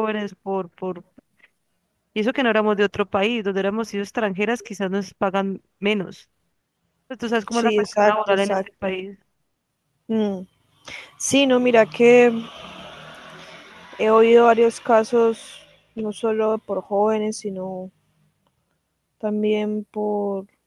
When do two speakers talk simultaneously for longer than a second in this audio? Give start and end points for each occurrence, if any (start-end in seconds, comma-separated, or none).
7.5-8.8